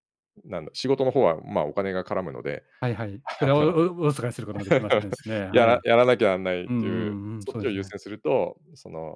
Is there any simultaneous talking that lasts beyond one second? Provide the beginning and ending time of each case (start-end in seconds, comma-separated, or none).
6.7-7.9